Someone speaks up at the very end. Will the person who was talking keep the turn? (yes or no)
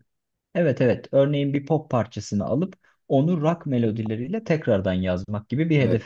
no